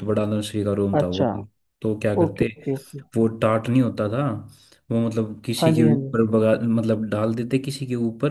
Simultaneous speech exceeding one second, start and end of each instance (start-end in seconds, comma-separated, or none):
none